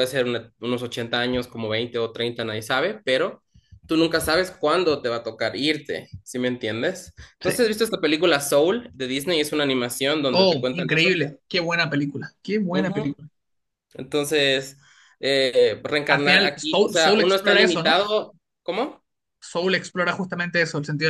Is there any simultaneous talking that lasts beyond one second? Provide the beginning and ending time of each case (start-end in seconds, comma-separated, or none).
16.1-18.0